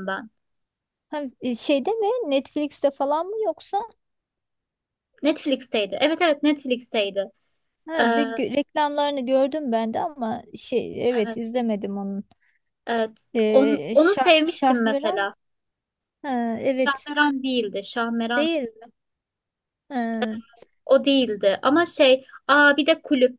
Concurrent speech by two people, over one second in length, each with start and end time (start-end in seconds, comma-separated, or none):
13.3-15.3